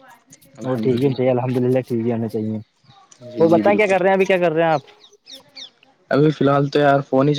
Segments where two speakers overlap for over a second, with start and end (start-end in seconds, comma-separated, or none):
none